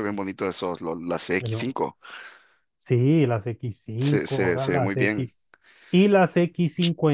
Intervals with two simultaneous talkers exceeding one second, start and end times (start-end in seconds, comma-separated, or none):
4.0-5.3